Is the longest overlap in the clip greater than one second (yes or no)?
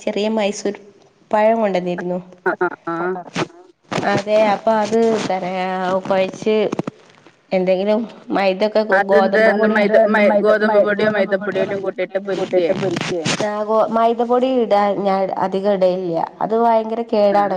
yes